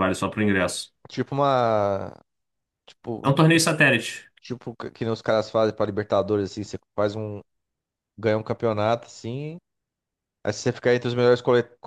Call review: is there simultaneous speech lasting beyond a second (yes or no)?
no